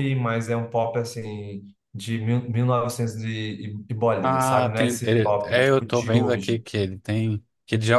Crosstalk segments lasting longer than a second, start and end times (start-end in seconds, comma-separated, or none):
4.2-6.6